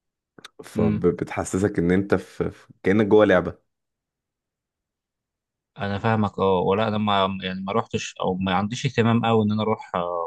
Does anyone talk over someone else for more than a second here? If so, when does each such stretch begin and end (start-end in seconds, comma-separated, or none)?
none